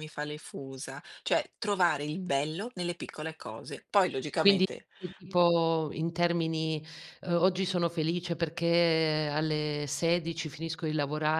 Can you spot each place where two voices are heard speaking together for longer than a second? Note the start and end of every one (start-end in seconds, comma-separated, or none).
none